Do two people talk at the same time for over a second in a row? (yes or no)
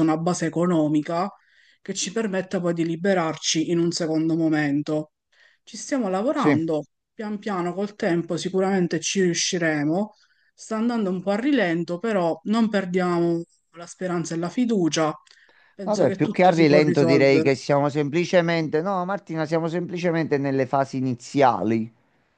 yes